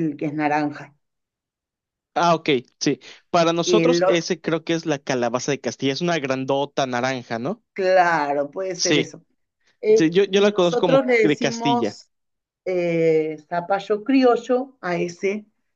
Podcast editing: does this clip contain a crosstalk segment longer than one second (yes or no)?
yes